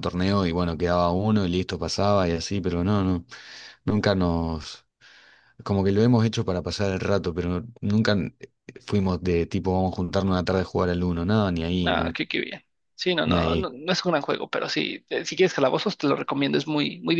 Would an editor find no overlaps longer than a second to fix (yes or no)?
yes